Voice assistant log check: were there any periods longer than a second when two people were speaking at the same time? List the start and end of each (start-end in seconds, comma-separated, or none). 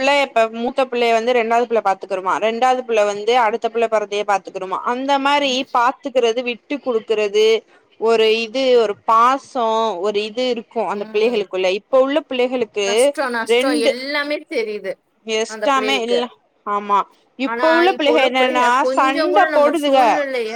17.5-20.0